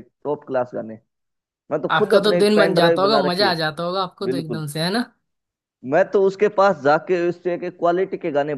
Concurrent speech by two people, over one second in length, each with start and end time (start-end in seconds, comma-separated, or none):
1.9-3.5